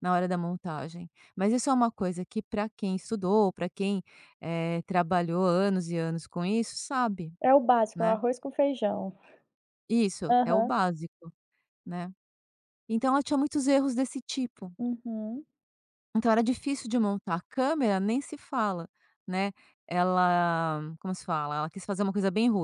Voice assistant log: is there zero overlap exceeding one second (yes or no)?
yes